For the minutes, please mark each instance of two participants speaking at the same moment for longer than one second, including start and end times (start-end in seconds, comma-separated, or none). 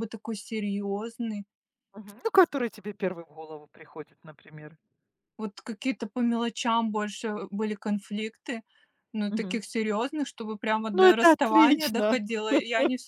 10.9-12.2